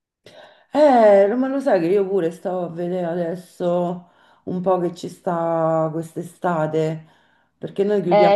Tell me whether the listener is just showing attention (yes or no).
no